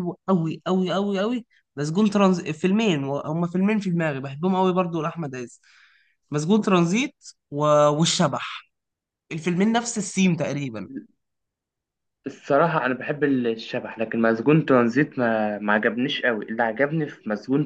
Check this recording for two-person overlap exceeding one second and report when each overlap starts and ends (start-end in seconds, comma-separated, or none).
none